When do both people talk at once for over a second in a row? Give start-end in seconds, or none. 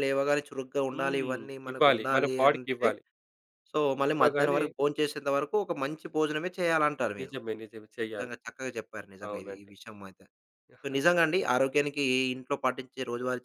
0.9-2.9